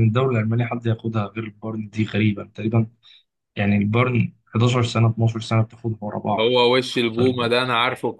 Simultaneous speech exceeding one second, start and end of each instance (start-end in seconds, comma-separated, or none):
none